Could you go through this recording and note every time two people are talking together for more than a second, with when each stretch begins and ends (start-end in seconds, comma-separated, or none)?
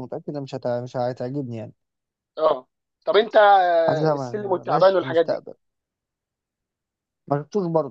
3.9-5.4